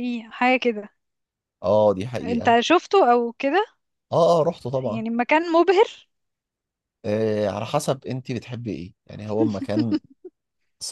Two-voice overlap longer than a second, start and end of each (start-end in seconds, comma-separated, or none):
none